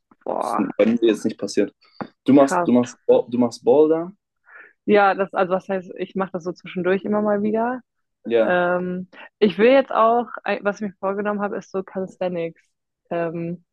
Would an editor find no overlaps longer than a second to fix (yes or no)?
yes